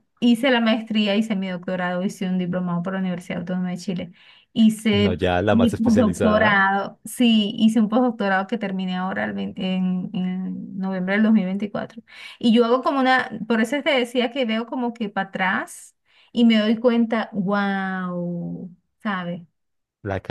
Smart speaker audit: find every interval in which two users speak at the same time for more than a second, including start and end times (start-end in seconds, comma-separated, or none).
4.9-6.6